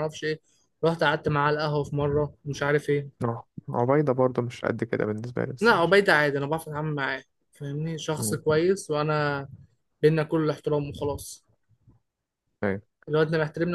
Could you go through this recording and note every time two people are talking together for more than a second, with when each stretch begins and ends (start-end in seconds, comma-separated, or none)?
none